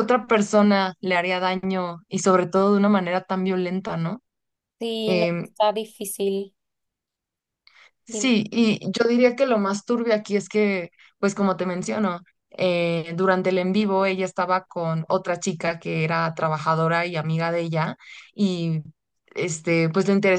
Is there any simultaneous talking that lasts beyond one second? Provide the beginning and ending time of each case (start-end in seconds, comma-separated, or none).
none